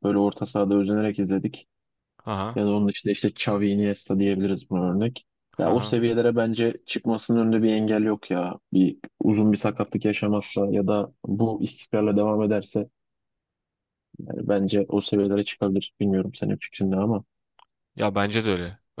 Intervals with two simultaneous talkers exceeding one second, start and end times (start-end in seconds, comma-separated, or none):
none